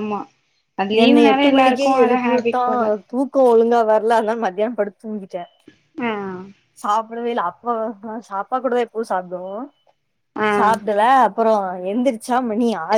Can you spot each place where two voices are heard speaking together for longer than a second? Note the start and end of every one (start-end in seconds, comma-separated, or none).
1.0-2.6